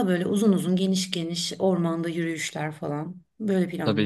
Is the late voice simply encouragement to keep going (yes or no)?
no